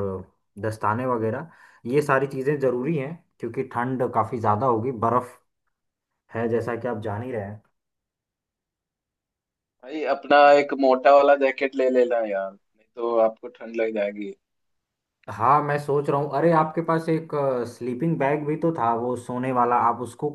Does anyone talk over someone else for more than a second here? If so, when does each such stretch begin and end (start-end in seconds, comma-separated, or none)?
none